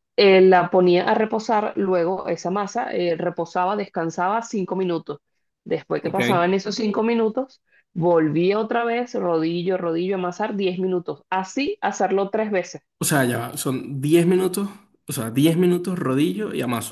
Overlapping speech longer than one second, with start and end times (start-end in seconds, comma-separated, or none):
none